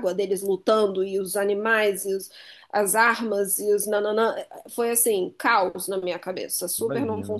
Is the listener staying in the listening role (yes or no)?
no